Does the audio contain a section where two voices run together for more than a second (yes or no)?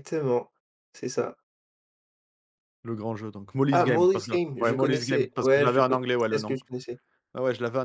yes